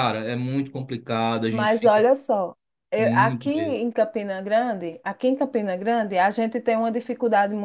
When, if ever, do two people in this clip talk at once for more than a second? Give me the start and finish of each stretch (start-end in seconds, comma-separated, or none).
none